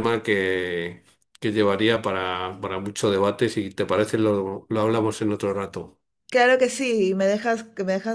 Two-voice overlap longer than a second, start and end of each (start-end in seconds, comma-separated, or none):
none